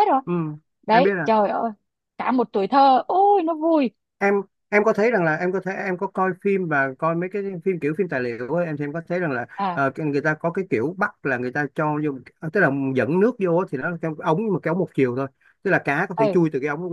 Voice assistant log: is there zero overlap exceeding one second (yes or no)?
yes